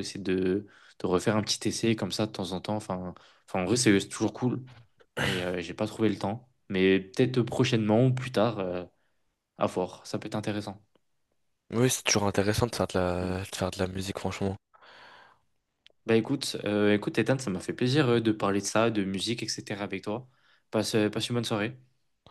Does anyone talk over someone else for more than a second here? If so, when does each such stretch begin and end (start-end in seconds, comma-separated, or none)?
none